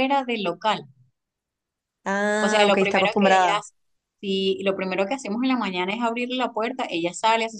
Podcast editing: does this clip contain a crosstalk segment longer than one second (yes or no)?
yes